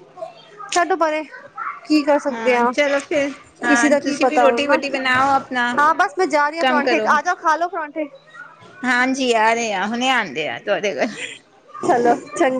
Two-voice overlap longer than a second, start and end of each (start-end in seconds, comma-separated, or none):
3.7-5.7